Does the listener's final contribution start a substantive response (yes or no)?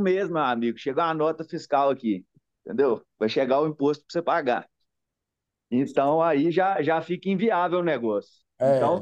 no